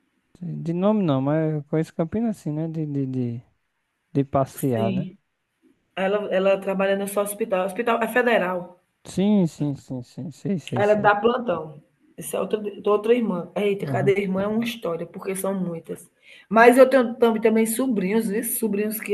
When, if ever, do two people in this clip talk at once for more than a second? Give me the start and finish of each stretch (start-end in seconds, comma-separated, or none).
none